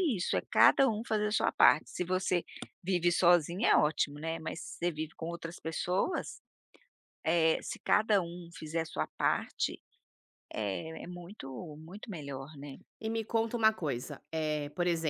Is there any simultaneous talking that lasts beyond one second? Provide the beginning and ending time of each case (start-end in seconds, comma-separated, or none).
none